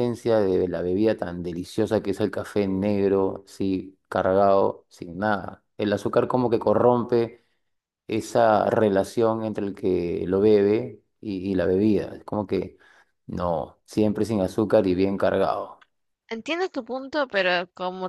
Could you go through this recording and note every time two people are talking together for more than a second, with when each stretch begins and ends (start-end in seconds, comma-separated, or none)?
none